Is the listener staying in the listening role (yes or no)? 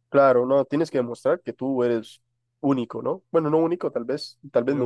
yes